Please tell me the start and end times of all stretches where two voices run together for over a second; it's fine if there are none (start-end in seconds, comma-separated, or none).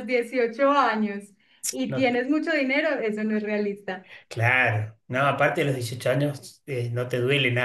none